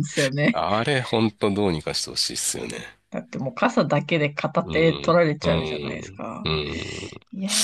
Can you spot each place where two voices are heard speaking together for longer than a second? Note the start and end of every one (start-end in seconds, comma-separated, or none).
4.6-6.5